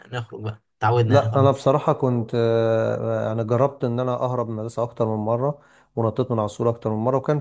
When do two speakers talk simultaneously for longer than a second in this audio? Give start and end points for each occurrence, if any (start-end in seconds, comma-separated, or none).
none